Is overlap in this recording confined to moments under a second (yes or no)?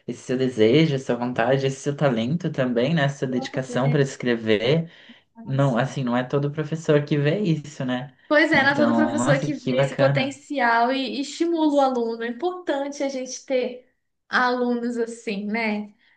no